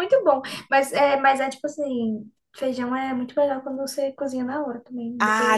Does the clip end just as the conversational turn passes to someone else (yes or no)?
yes